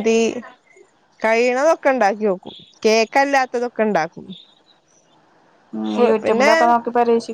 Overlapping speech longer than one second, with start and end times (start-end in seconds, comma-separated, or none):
none